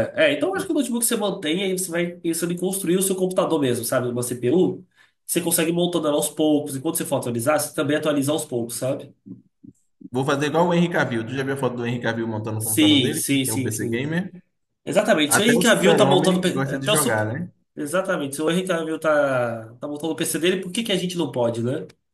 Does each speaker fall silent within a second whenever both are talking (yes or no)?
no